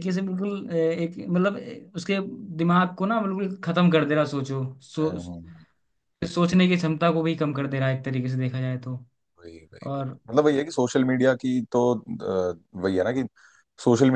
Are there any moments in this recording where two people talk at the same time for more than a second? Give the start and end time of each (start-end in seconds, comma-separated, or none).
none